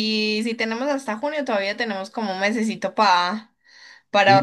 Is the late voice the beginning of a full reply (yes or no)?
yes